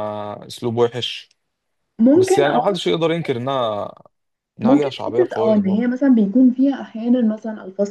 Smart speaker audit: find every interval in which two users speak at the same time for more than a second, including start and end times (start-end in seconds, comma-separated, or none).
4.6-5.9